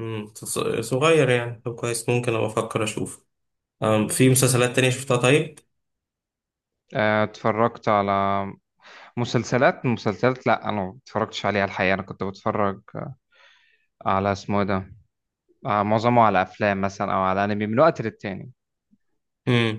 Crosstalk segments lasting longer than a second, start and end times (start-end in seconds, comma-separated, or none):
none